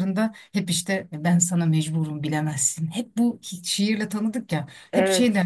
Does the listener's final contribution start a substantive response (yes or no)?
no